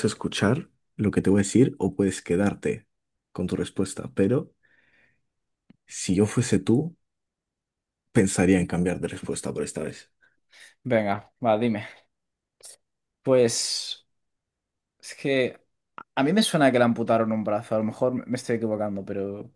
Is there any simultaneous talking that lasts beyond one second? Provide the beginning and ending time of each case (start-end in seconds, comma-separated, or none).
none